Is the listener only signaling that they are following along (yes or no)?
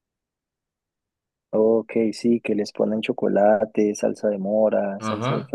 no